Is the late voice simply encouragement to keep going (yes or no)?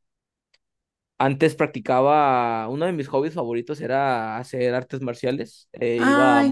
no